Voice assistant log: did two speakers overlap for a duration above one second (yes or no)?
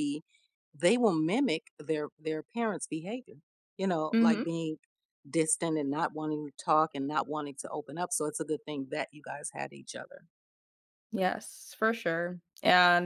no